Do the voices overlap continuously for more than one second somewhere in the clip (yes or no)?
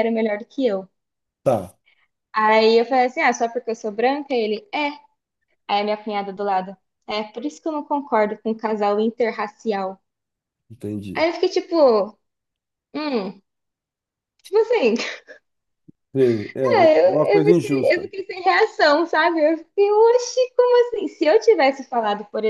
yes